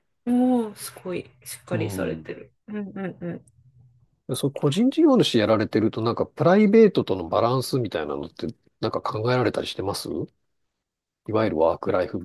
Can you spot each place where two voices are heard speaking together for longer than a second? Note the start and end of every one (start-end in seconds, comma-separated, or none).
none